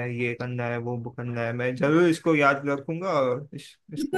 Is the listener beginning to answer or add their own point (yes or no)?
yes